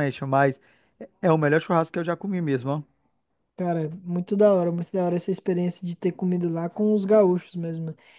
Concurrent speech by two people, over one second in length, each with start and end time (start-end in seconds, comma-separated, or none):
none